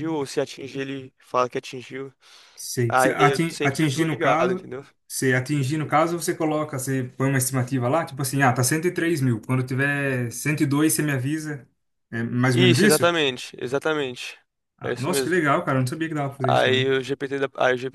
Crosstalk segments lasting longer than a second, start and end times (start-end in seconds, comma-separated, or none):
2.9-4.7